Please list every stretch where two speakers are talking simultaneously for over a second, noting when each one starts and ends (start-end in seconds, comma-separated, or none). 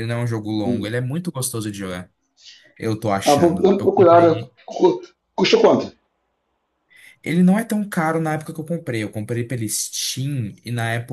3.2-4.5